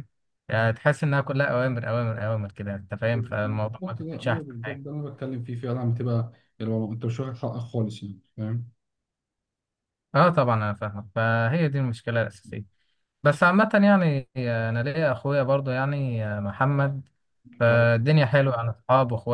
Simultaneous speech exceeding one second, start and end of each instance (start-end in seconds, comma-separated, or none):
3.1-4.8